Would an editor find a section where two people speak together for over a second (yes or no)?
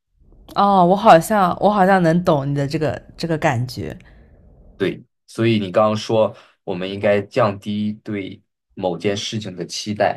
no